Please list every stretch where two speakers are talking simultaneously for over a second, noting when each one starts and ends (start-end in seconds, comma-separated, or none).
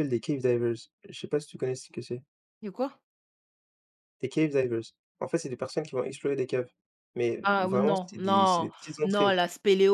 7.4-9.4